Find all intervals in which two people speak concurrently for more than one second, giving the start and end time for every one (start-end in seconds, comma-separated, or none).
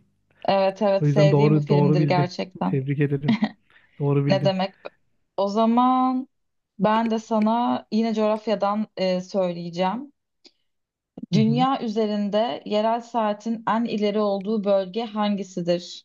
1.0-2.8